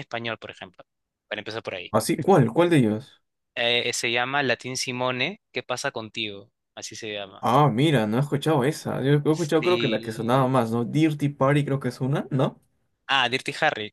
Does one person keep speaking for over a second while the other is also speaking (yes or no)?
yes